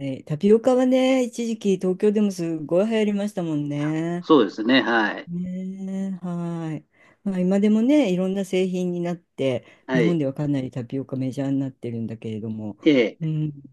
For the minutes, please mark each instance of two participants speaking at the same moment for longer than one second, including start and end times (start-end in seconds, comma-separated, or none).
none